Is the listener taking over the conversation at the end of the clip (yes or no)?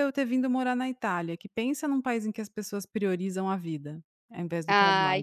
yes